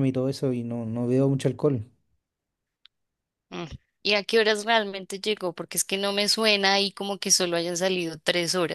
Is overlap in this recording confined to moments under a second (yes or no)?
yes